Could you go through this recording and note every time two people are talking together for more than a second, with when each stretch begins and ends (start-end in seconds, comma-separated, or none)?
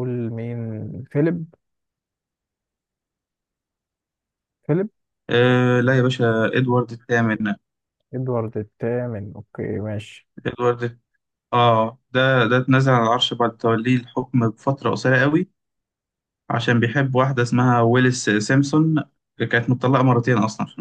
none